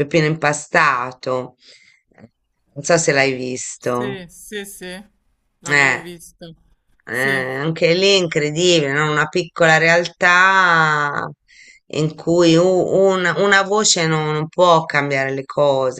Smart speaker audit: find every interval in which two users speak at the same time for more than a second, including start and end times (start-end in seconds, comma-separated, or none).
none